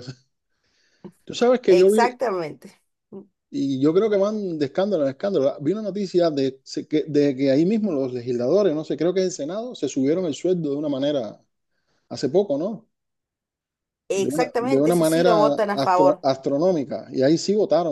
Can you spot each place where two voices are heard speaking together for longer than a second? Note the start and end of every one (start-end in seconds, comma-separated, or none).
14.1-16.2